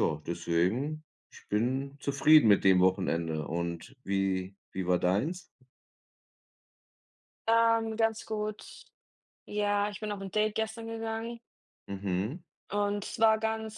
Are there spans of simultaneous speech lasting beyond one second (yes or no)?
no